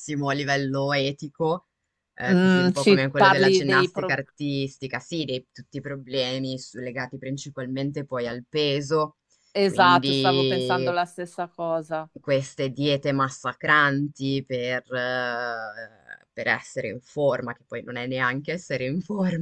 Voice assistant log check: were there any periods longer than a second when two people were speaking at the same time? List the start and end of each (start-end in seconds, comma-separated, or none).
2.3-4.2, 9.7-10.9